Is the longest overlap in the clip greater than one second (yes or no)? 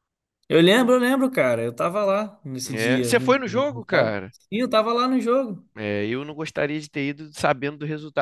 yes